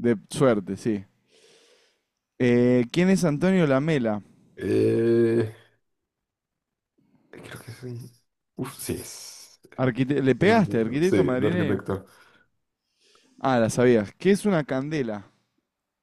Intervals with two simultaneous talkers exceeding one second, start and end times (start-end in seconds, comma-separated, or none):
10.4-11.8